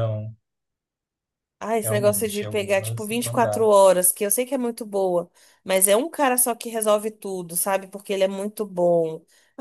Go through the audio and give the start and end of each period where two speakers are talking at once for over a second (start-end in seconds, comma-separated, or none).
1.8-3.7